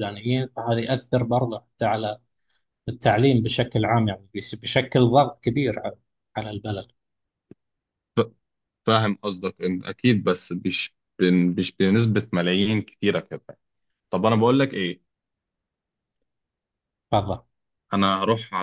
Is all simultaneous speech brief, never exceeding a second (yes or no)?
yes